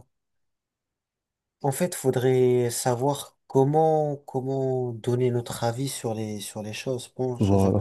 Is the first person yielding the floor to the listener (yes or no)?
yes